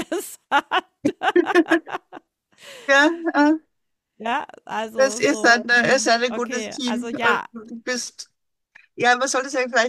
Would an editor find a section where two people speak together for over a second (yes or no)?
yes